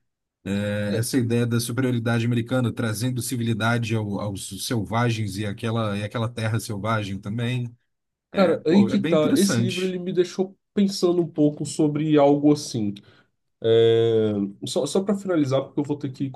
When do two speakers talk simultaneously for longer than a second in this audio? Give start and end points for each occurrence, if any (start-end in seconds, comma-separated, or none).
8.3-9.9